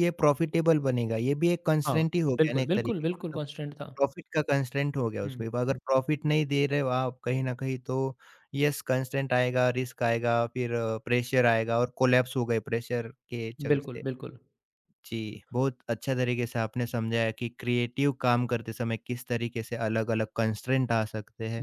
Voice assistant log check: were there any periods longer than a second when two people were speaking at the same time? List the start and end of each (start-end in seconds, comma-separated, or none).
1.9-3.4